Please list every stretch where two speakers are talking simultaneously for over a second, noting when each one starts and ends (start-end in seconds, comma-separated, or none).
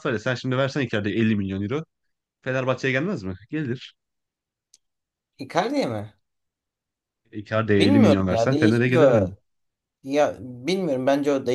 7.8-9.3